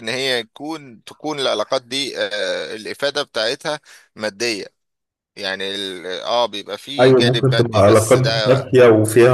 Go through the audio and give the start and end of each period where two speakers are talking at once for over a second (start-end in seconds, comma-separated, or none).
7.0-8.6